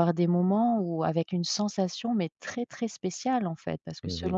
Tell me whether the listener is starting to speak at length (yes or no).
no